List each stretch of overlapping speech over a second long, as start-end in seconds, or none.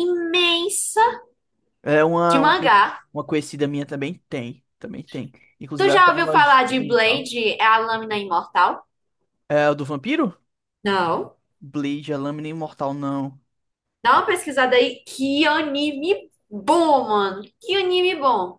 5.8-7.3